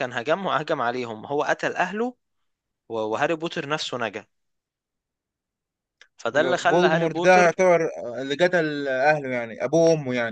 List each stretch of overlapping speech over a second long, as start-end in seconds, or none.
6.3-7.6